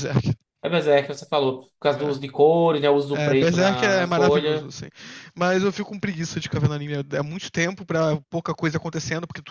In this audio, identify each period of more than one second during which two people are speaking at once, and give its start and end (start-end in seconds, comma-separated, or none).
3.1-4.7